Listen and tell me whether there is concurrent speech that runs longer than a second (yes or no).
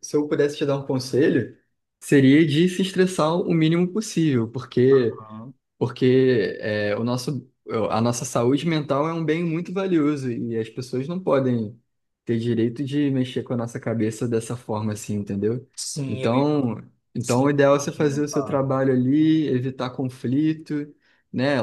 yes